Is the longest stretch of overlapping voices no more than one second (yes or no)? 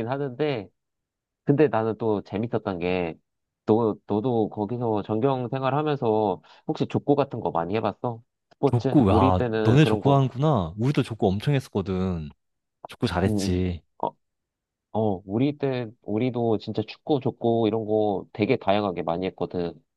no